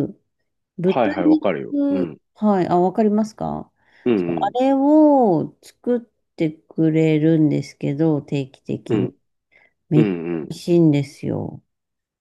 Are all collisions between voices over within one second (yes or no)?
no